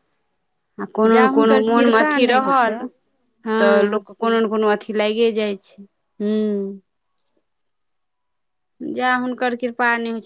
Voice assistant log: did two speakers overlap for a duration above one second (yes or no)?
yes